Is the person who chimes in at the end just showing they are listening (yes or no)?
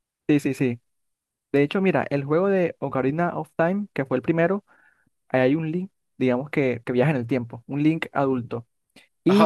yes